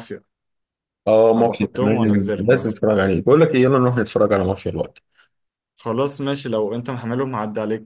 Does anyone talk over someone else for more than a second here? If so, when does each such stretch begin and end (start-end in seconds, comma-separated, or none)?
1.3-2.8